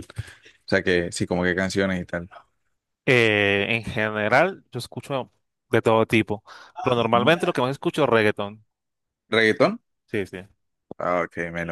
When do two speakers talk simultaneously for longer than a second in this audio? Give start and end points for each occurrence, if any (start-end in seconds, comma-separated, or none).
none